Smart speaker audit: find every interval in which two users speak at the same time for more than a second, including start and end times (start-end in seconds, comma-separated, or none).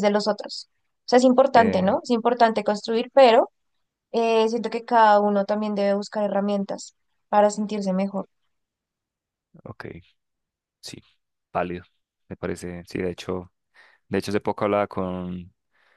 none